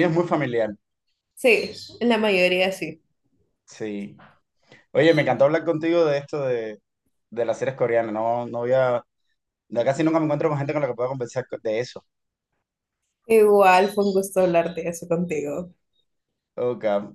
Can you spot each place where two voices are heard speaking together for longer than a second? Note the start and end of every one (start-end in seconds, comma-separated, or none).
none